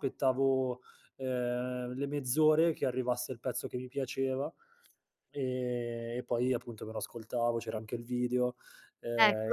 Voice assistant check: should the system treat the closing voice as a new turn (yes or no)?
yes